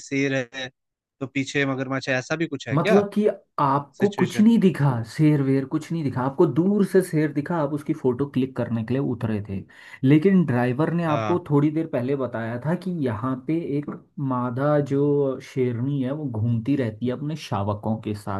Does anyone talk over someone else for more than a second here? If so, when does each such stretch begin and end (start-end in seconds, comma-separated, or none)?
none